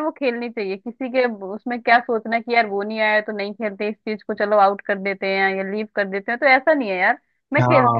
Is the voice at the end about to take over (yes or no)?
yes